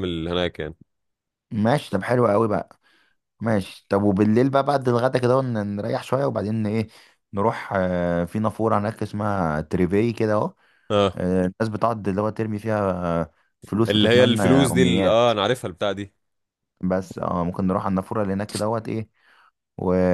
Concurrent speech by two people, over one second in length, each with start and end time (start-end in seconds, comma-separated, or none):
13.9-15.2